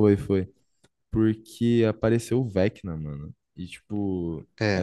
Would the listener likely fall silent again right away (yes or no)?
yes